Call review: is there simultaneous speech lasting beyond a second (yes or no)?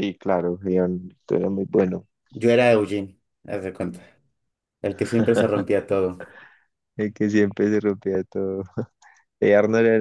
no